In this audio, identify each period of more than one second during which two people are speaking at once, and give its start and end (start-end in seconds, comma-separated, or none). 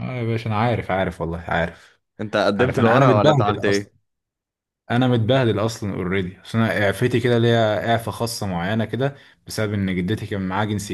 2.5-3.9